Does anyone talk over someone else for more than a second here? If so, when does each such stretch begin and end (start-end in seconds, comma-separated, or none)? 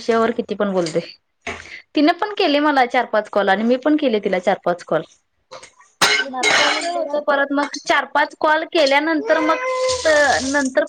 6.3-7.6